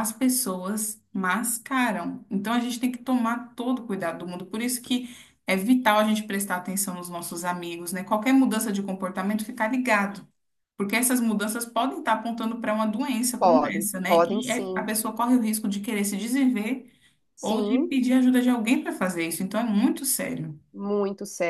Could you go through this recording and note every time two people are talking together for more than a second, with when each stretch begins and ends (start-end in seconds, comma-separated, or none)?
13.4-14.9